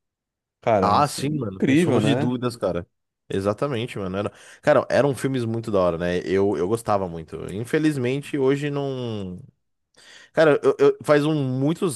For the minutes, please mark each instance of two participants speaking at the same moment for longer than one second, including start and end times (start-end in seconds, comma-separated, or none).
0.8-2.3